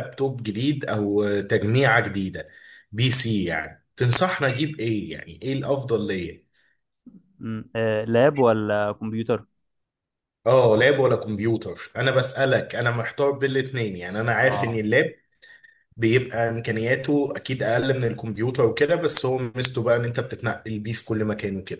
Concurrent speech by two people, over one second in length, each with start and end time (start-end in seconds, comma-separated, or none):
none